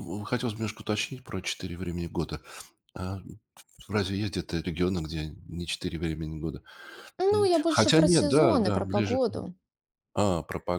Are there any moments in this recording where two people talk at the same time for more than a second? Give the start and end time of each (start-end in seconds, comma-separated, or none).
7.3-9.2